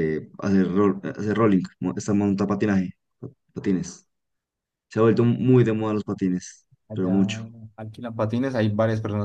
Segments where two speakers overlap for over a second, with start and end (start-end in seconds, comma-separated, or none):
none